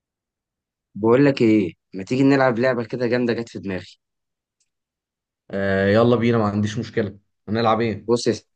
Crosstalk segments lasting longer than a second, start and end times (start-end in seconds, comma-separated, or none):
none